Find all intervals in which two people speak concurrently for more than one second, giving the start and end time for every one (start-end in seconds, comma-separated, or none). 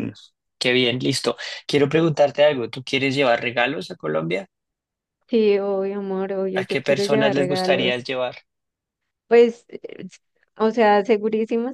6.5-8.0